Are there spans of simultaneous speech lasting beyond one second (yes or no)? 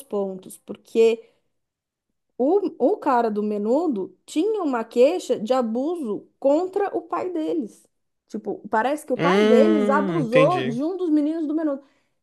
yes